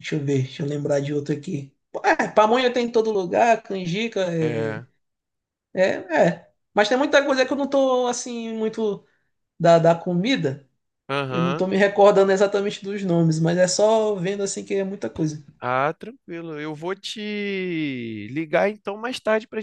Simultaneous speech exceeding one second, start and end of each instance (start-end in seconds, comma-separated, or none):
none